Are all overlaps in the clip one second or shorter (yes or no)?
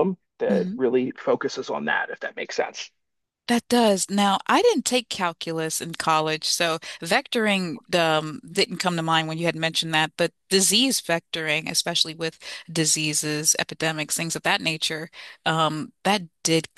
yes